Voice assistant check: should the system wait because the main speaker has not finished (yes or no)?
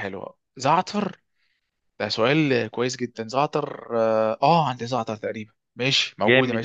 no